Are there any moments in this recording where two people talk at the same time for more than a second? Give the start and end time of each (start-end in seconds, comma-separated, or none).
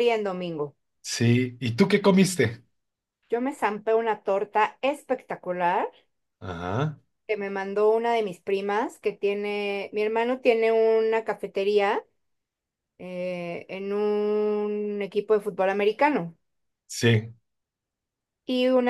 none